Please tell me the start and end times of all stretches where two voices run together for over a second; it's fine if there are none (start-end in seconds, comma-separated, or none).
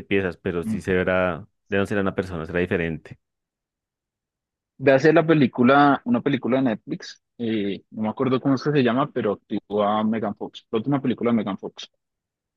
none